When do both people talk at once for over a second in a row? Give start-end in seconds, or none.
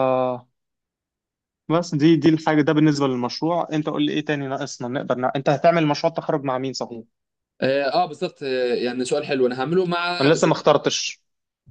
none